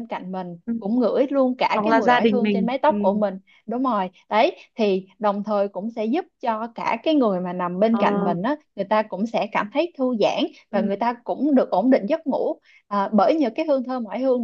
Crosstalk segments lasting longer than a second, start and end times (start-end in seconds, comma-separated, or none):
1.7-3.2